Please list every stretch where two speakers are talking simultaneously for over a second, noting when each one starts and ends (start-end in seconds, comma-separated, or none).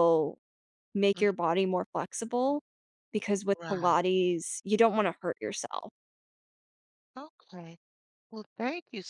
none